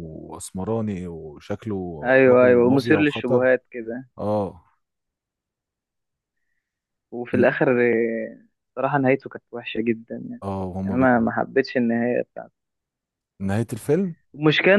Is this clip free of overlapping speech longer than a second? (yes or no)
no